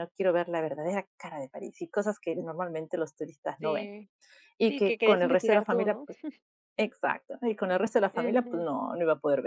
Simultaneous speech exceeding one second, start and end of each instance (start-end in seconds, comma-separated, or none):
4.7-6.1